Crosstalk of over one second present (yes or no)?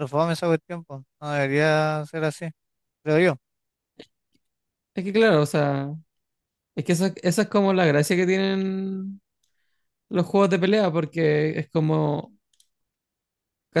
no